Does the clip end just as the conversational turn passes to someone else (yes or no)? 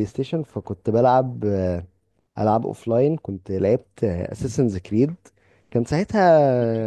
no